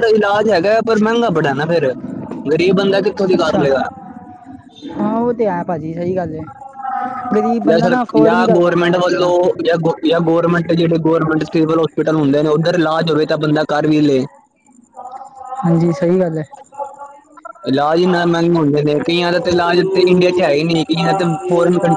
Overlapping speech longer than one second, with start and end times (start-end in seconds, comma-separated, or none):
7.7-9.3